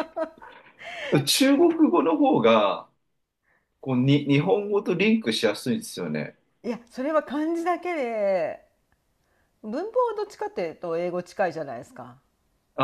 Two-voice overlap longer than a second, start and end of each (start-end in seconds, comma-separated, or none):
none